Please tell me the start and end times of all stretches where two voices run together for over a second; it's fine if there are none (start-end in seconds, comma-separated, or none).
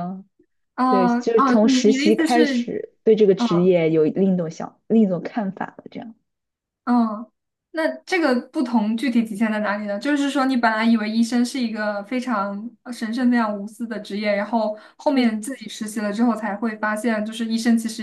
0.9-2.7